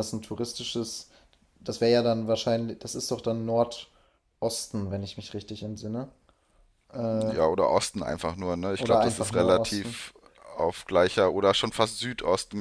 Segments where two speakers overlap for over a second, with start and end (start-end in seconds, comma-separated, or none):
8.8-10.0